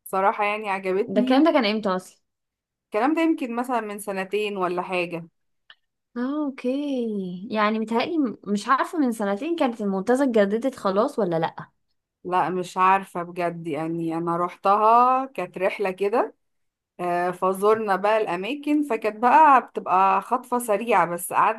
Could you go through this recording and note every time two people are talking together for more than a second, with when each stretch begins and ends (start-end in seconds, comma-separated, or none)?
none